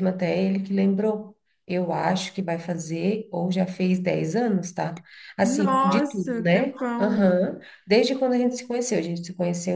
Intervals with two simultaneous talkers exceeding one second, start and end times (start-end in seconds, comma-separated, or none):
5.4-7.2